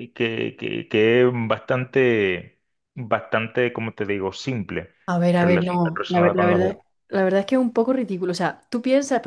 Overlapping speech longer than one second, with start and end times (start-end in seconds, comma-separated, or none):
5.4-6.8